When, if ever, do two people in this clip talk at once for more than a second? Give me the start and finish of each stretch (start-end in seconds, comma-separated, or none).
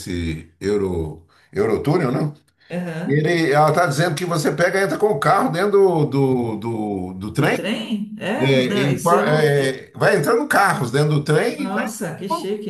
8.4-9.8